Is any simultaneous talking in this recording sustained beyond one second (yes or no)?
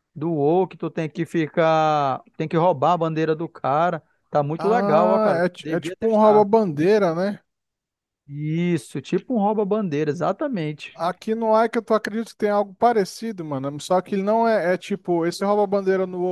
yes